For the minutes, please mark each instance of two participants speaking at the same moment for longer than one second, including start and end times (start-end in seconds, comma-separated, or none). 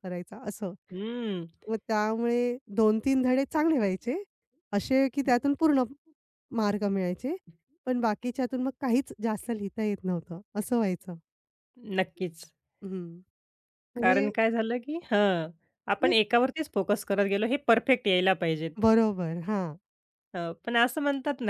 none